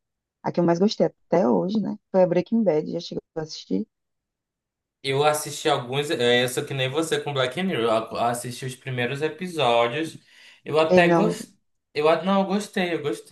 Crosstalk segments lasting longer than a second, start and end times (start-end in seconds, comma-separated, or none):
none